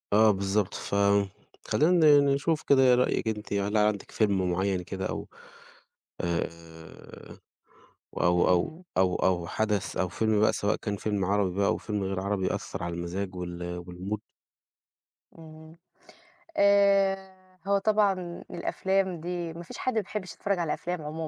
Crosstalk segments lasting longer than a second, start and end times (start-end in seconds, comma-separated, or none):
none